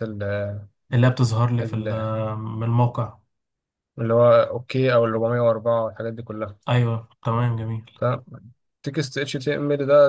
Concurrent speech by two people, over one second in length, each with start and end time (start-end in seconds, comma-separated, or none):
none